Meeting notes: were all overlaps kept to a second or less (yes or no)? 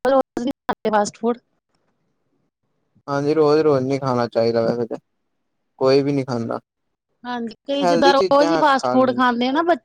no